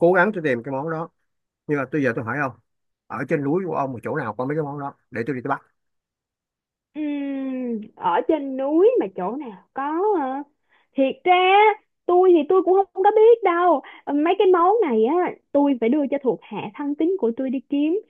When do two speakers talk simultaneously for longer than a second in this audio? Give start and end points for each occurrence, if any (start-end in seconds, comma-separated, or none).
none